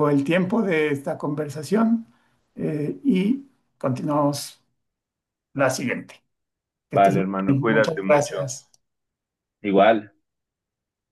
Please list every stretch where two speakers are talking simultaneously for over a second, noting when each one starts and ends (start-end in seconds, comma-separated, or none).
6.9-8.5